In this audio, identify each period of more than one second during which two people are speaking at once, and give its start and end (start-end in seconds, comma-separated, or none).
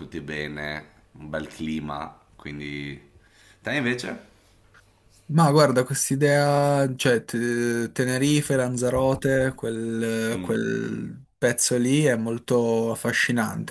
none